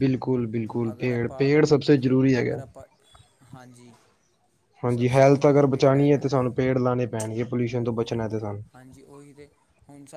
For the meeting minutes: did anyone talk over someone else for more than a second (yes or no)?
yes